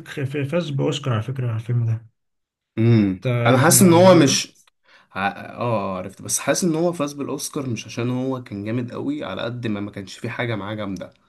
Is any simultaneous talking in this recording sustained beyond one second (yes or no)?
yes